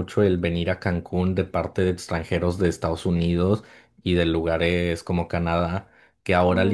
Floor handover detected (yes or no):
no